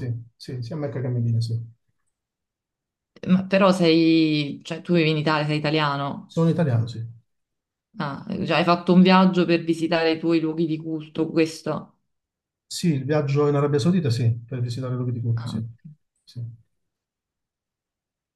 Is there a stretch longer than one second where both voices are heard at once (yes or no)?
no